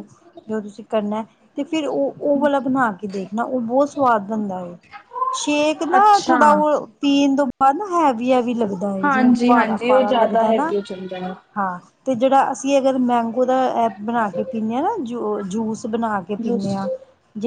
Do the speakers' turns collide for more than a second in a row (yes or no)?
yes